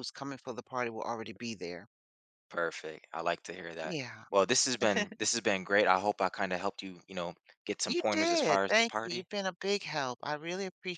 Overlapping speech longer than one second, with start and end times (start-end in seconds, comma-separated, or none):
7.9-9.3